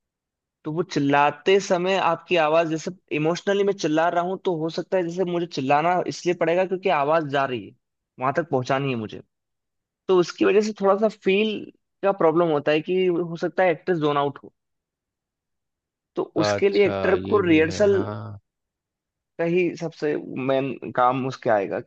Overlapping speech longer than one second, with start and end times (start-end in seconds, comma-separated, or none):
16.4-17.9